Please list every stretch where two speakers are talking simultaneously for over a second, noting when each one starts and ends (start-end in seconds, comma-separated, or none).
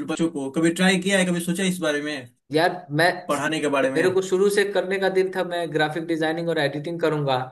none